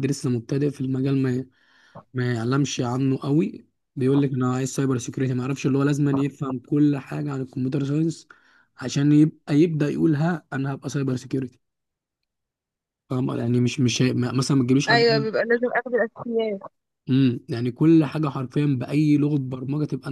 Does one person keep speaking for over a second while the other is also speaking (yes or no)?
no